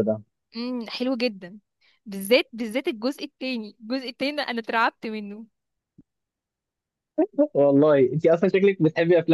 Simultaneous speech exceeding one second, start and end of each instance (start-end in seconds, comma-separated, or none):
none